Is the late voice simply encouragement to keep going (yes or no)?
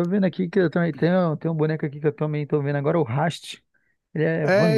no